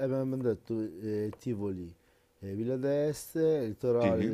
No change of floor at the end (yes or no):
yes